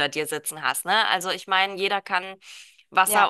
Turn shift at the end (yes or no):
yes